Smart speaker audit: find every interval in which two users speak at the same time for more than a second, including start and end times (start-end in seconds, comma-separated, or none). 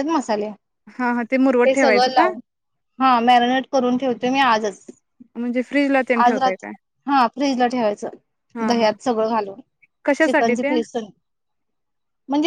none